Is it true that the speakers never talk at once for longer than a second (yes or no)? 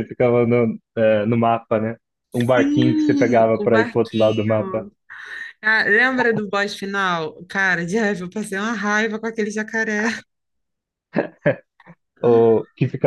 no